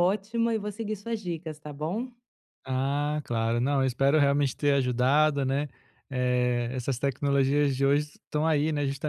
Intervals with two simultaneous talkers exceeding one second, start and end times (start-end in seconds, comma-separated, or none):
none